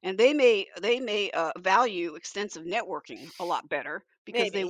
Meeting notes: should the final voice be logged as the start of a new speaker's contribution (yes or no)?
no